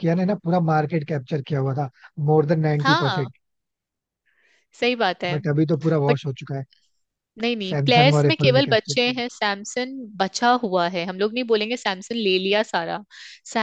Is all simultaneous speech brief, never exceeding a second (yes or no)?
no